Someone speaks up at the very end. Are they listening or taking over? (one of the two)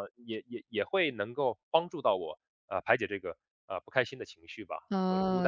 taking over